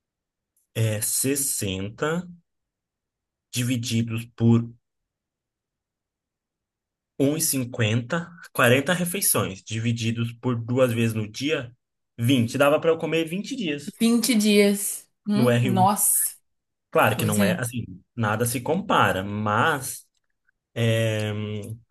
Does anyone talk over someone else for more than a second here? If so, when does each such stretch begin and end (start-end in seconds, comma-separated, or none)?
none